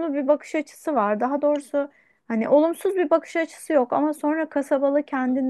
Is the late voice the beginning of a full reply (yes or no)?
no